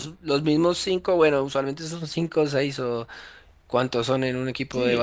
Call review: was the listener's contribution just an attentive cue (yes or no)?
no